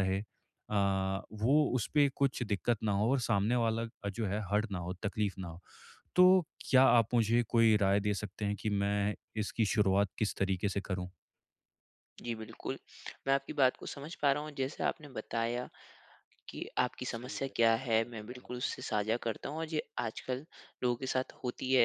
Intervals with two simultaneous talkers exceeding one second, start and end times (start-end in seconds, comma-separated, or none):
17.1-18.7